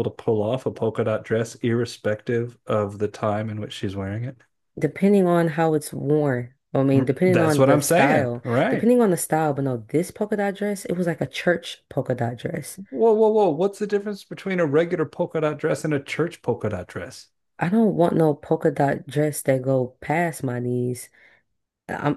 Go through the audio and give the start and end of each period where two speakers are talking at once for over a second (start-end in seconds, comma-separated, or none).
6.9-8.9